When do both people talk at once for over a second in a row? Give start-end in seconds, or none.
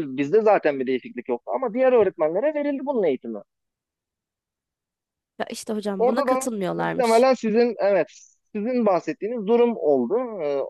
6.0-7.3